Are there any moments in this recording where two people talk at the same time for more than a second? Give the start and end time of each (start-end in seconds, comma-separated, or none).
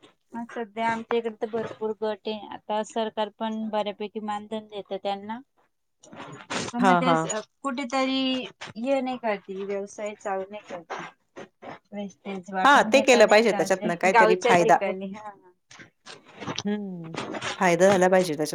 12.7-14.8